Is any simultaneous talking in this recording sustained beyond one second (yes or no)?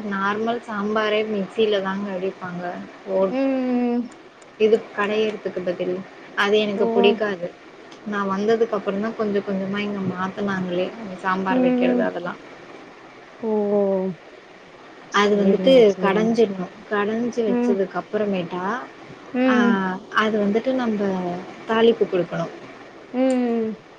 no